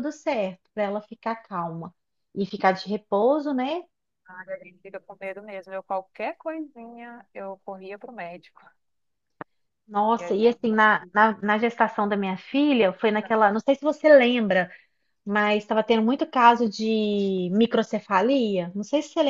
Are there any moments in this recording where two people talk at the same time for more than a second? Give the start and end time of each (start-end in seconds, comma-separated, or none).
none